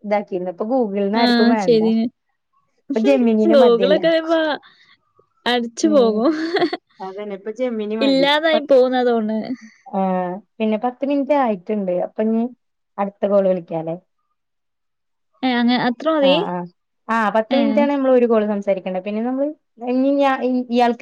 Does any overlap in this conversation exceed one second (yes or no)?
no